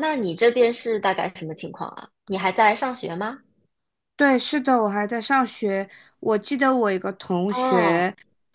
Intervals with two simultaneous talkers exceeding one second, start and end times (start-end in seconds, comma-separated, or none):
none